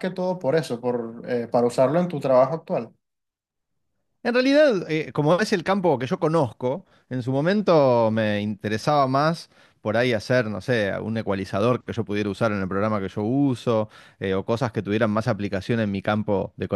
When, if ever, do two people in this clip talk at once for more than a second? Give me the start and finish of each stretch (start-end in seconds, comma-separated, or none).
none